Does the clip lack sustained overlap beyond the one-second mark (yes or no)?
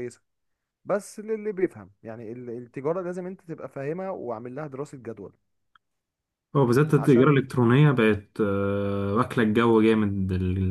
yes